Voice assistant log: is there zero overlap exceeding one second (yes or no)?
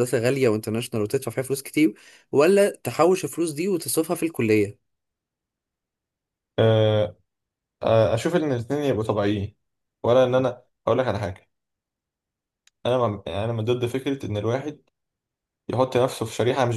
yes